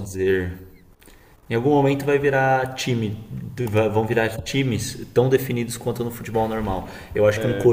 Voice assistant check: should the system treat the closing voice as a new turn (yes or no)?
no